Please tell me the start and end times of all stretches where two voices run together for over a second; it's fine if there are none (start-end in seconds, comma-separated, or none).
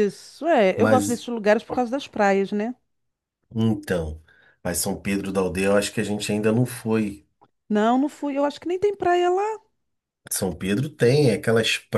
none